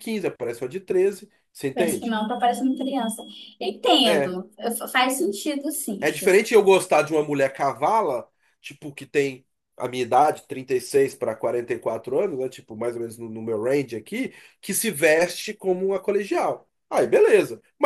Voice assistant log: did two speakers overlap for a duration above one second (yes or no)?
no